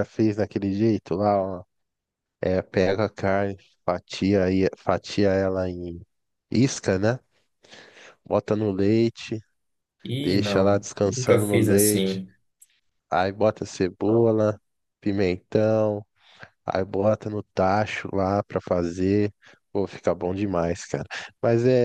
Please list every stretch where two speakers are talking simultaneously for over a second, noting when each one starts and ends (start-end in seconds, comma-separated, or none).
10.2-12.2